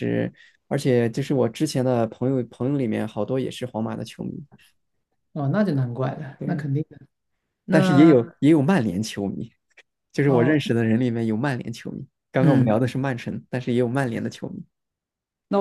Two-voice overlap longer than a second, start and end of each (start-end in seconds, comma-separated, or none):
none